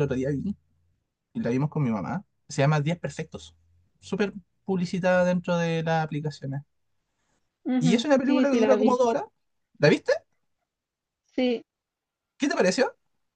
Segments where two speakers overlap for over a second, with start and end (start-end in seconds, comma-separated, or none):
7.8-9.0